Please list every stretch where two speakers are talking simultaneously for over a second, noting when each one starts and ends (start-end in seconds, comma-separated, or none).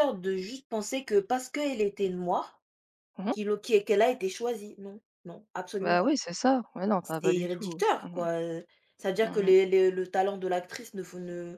7.0-8.2